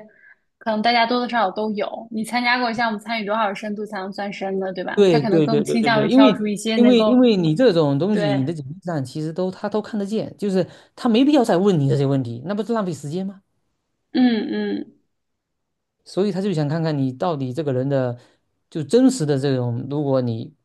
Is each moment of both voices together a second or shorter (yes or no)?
no